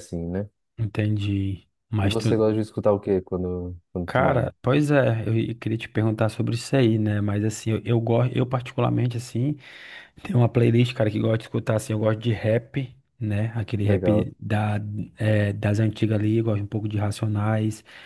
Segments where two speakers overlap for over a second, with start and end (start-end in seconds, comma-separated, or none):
none